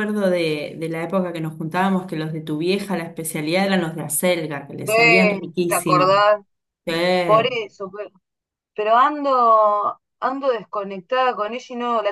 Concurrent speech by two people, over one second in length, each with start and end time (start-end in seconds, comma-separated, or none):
4.9-6.2